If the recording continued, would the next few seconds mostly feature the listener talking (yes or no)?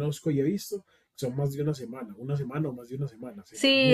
yes